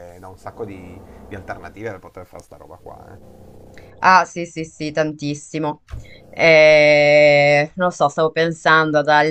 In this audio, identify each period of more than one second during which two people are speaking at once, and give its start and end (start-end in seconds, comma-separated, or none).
none